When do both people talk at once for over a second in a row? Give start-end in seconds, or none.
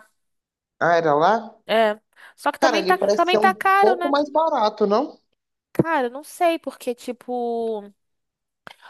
2.6-4.2